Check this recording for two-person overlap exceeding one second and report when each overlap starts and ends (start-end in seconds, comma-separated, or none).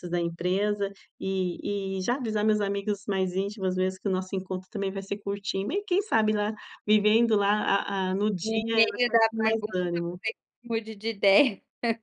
8.4-10.0